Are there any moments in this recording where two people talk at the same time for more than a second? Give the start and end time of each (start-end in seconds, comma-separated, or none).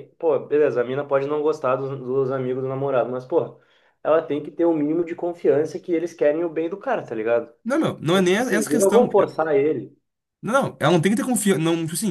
8.1-9.4